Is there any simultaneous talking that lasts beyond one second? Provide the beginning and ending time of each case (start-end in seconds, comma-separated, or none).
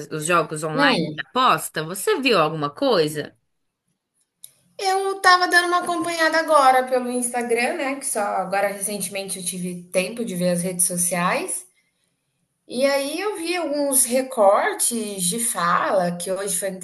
none